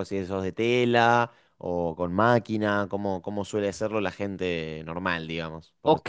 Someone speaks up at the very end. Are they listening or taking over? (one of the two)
taking over